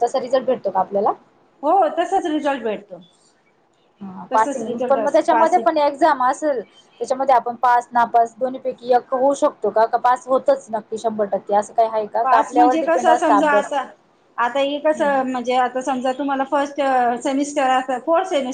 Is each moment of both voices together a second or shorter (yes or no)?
no